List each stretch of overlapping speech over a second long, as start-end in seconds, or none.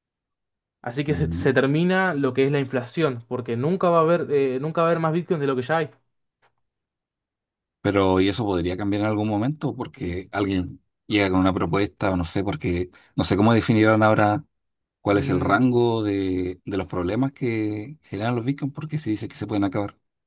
none